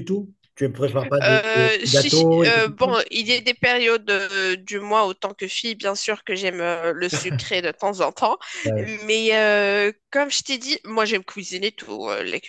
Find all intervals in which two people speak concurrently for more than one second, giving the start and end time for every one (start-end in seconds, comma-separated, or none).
1.2-3.0